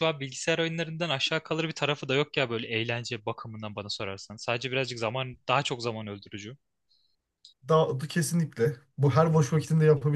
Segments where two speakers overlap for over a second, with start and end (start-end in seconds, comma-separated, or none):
none